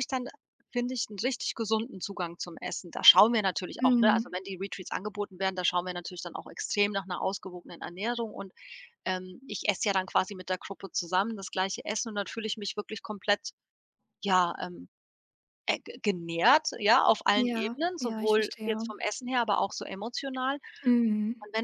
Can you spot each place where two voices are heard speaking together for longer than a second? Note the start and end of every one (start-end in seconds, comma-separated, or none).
17.3-18.9